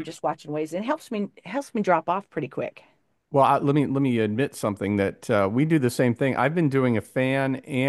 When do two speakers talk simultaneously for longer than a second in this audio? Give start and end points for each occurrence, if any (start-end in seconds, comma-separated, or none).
none